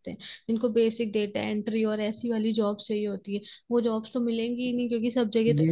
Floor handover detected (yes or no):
yes